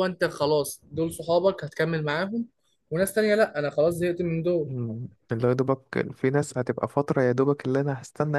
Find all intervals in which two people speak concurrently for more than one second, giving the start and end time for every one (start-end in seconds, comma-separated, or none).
none